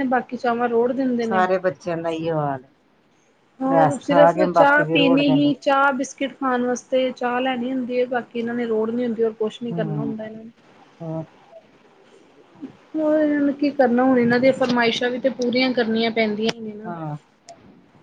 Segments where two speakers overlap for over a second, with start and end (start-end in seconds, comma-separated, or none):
3.9-5.5